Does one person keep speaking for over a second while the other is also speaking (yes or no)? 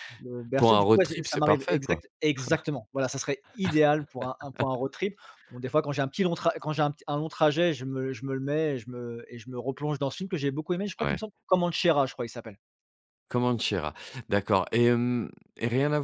yes